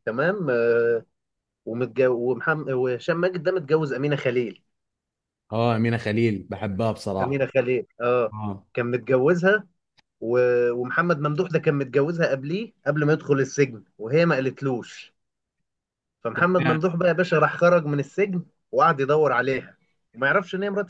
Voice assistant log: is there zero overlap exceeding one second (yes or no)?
yes